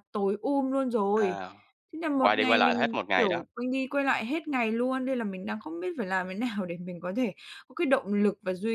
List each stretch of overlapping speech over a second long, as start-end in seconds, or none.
2.1-3.4